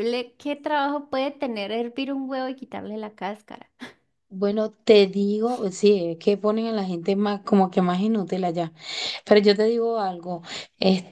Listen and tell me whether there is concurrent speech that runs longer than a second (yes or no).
no